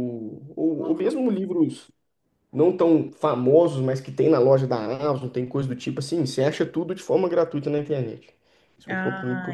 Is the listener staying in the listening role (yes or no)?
no